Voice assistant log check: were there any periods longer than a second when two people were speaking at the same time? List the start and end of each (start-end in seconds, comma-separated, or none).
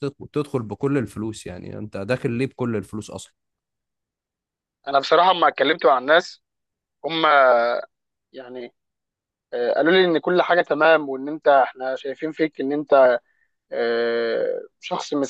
none